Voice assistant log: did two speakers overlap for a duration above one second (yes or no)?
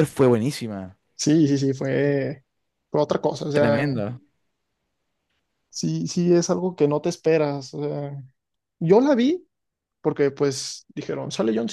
no